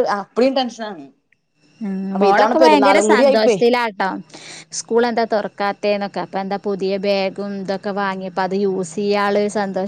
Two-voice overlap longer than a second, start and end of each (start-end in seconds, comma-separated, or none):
2.1-3.6